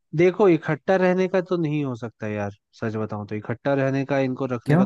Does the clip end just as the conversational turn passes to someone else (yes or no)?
no